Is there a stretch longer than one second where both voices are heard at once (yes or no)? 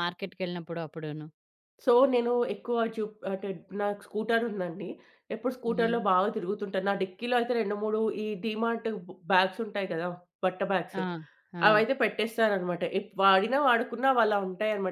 no